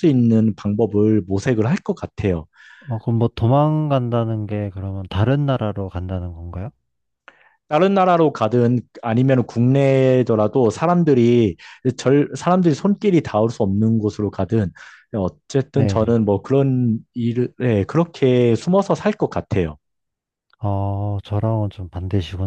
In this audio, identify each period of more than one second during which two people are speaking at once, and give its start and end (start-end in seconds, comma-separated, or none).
none